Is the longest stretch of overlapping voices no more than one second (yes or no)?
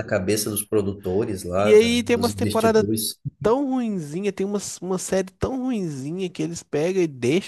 no